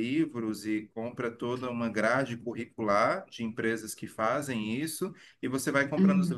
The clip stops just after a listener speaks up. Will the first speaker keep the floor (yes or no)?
yes